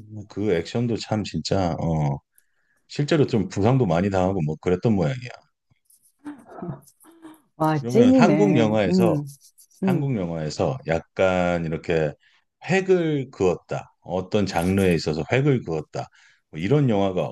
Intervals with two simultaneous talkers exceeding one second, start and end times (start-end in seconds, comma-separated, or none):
7.8-9.2